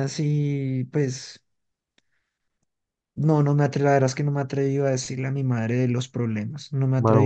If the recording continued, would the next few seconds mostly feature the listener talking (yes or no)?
yes